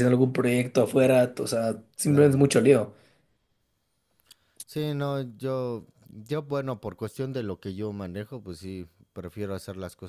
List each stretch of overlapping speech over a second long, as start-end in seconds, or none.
none